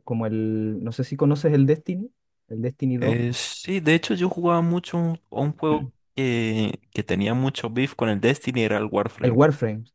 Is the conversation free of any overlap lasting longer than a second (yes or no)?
yes